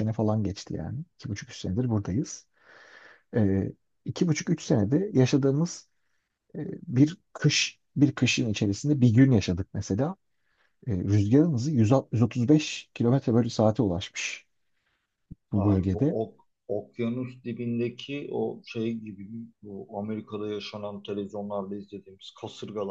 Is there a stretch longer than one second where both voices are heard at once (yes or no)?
no